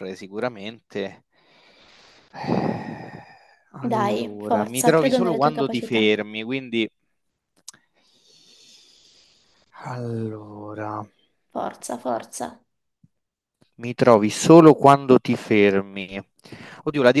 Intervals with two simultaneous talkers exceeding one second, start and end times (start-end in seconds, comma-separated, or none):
3.8-6.1